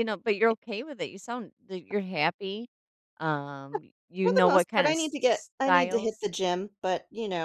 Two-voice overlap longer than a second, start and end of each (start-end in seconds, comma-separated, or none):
4.2-6.3